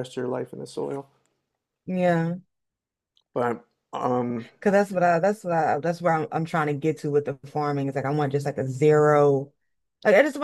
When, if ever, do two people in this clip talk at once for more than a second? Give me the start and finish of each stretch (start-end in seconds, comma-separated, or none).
none